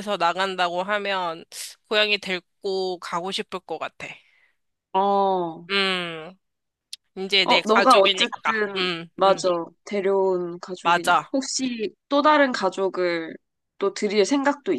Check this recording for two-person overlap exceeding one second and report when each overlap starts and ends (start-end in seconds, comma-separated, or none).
7.7-9.5